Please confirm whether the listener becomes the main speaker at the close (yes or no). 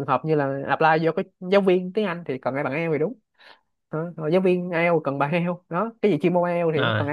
yes